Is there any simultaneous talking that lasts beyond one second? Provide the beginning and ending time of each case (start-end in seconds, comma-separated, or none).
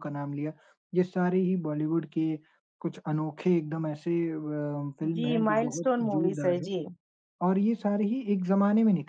5.1-6.7